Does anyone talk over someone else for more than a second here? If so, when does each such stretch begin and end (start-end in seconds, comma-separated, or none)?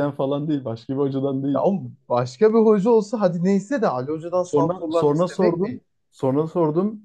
4.4-5.8